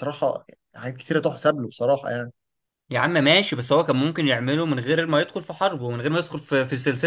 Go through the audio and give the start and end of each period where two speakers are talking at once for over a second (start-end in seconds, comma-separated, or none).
none